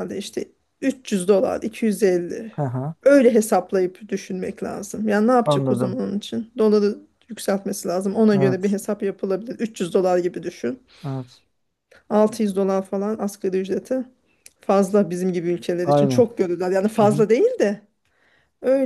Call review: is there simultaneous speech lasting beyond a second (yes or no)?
no